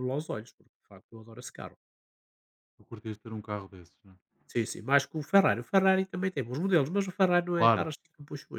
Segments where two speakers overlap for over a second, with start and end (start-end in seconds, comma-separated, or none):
none